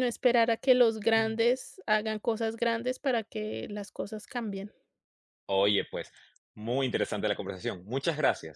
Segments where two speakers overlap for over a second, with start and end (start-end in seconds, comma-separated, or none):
none